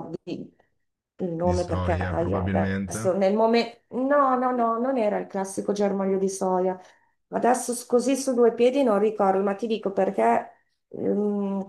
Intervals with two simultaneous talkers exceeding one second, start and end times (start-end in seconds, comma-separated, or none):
1.4-3.2